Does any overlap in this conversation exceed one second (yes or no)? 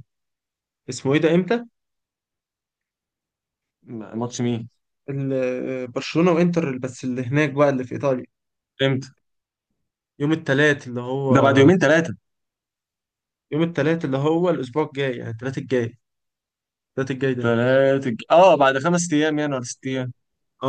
no